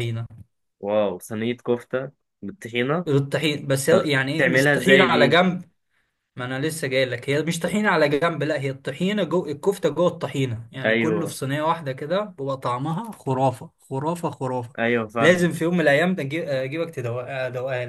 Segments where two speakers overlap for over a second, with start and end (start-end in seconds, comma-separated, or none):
3.9-5.4